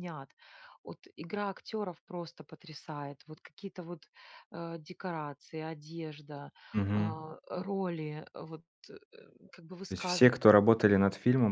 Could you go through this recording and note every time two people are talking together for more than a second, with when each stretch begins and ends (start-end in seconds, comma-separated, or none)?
none